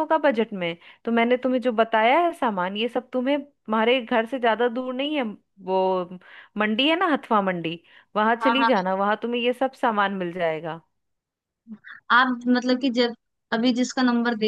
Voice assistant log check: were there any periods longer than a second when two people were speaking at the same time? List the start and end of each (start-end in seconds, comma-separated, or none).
none